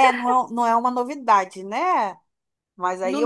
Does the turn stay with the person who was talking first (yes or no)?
no